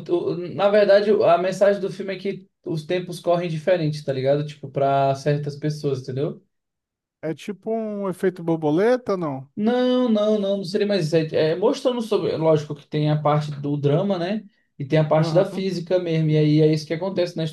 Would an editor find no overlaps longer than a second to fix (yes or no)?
yes